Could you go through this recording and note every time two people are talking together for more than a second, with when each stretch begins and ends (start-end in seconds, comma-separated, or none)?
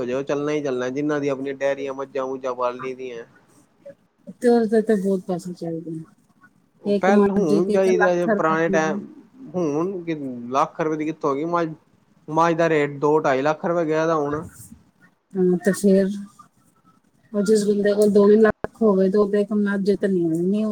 7.0-9.0